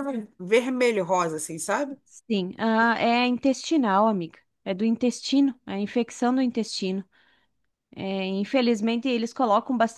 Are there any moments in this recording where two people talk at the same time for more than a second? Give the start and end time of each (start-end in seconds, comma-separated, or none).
none